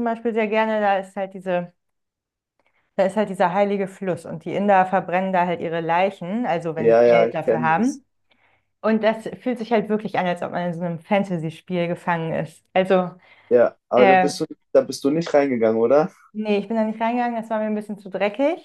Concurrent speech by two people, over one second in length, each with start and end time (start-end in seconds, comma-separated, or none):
6.8-8.0